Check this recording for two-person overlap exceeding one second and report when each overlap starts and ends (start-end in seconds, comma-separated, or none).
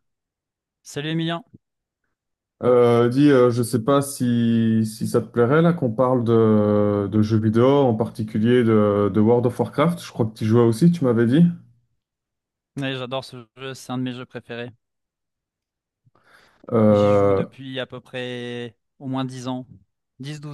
none